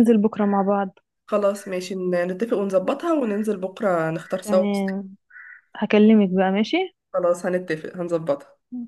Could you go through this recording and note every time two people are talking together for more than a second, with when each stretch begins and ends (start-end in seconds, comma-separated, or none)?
none